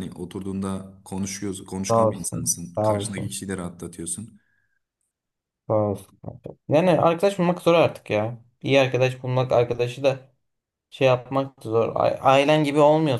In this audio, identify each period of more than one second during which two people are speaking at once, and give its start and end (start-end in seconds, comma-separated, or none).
1.9-3.4